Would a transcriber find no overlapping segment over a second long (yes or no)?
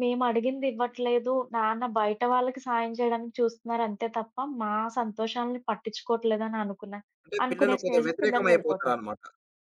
no